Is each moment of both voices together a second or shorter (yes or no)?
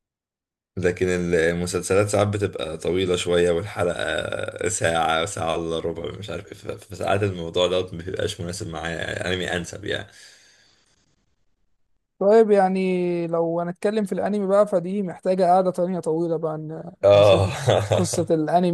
yes